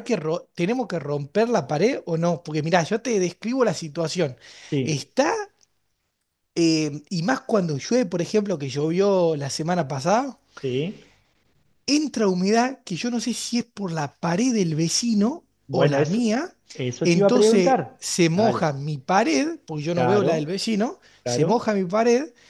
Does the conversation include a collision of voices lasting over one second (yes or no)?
yes